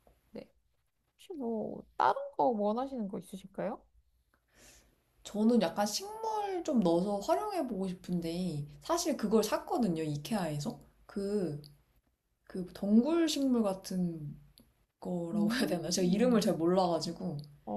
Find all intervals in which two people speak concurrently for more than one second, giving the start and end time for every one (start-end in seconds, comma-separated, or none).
15.3-16.6